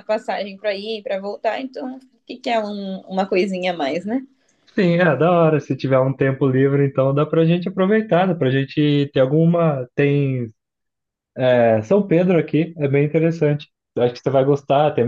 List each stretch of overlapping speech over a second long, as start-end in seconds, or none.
none